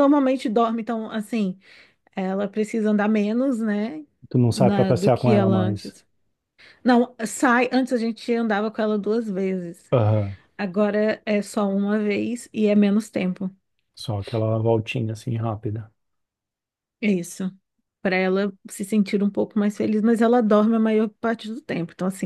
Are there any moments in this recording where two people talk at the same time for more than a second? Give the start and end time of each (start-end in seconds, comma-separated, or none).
4.5-6.0